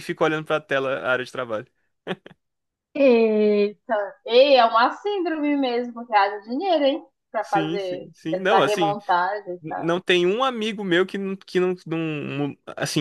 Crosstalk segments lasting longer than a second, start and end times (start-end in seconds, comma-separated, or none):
7.4-8.9